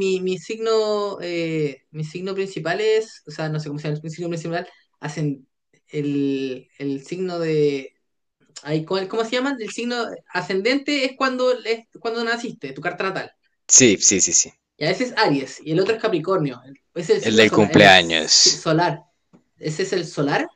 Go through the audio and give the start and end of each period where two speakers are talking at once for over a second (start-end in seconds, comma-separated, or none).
17.2-18.7